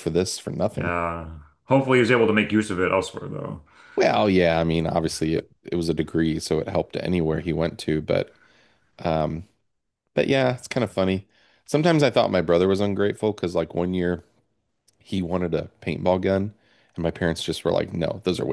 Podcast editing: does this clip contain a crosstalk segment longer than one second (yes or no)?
no